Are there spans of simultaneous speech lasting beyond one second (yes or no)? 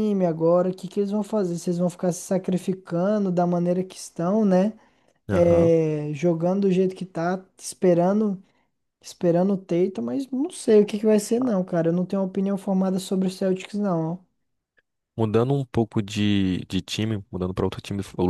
no